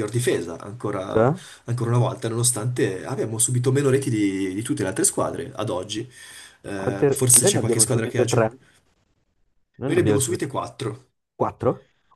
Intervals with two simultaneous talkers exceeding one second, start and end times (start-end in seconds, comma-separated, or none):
6.8-8.6